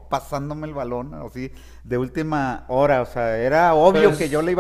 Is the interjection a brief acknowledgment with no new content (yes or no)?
yes